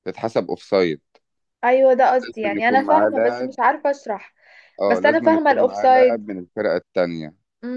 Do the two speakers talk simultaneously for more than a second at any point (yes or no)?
yes